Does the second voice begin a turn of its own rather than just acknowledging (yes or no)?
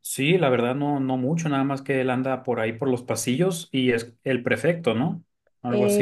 yes